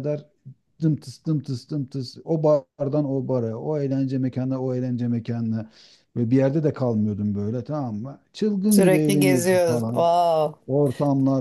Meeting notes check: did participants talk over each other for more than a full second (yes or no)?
yes